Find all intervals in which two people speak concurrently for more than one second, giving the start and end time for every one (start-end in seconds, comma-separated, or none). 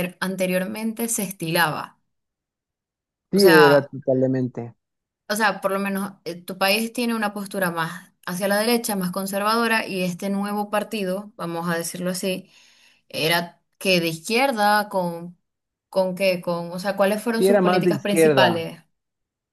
17.3-18.7